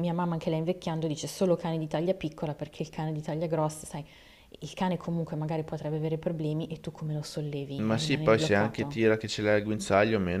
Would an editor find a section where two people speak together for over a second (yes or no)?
yes